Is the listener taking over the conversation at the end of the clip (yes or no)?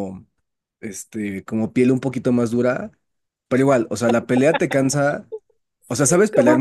no